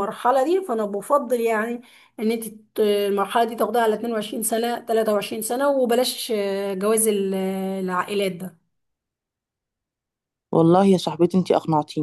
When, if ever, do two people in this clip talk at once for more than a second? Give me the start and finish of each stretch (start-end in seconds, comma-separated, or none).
none